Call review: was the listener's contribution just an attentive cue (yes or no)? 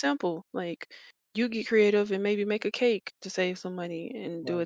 yes